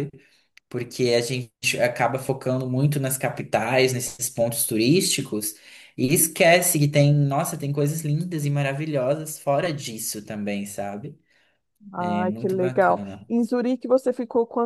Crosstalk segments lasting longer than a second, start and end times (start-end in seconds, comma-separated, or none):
12.0-13.3